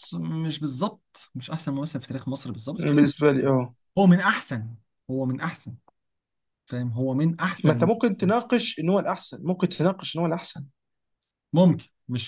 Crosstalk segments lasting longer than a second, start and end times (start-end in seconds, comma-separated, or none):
none